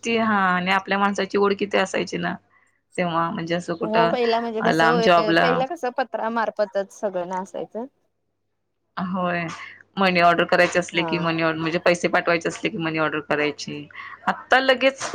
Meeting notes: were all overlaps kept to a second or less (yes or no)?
yes